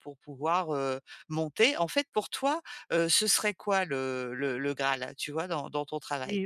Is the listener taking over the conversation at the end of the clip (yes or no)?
yes